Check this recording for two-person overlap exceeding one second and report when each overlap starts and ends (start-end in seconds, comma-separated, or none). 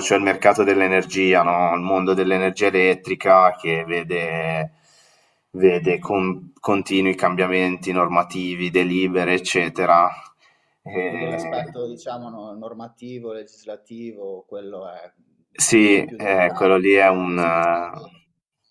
15.6-17.4